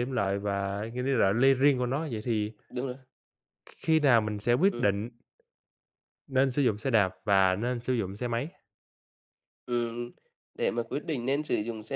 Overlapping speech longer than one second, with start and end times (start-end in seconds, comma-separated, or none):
none